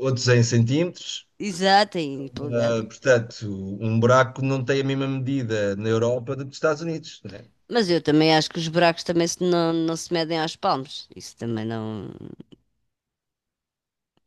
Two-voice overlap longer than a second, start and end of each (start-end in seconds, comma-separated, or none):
none